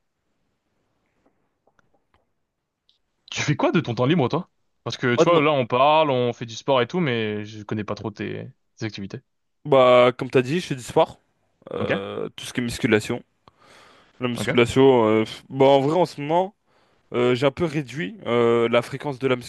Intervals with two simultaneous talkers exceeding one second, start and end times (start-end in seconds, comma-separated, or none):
none